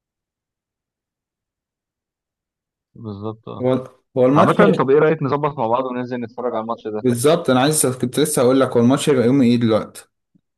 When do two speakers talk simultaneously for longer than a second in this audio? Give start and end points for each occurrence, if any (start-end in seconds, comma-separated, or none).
none